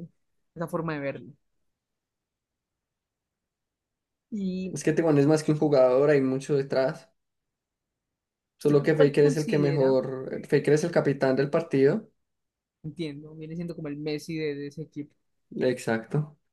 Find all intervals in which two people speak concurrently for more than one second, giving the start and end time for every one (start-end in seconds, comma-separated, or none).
8.6-10.0